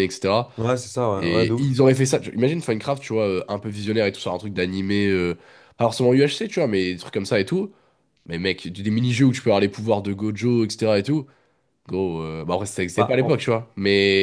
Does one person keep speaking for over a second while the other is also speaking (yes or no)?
no